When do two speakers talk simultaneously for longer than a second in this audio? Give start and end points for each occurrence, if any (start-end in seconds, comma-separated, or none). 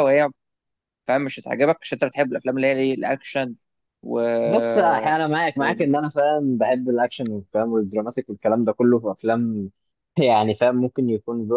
none